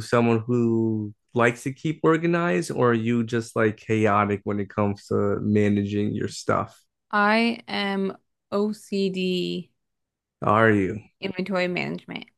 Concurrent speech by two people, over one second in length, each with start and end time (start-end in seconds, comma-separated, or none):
none